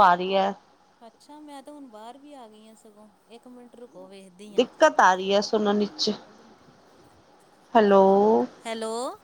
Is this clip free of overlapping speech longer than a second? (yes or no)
yes